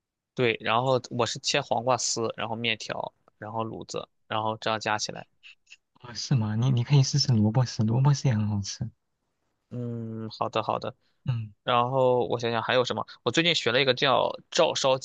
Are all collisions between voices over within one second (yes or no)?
yes